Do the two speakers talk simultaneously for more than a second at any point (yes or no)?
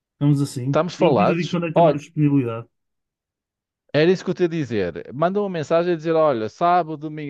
yes